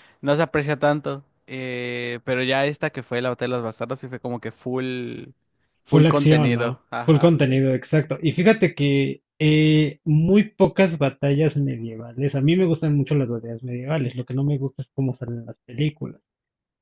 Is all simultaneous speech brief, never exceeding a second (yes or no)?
no